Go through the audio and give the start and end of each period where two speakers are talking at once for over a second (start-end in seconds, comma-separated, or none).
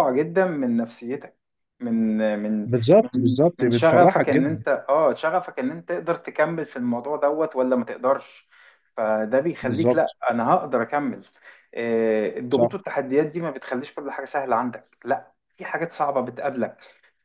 2.6-4.6